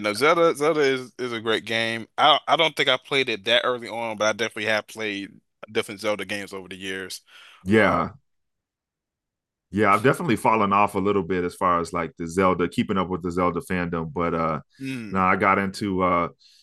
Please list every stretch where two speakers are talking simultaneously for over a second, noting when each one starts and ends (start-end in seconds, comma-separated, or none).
none